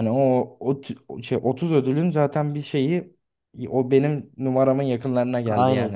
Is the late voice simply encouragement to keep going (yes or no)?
no